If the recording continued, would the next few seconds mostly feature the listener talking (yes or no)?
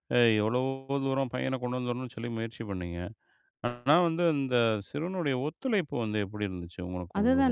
yes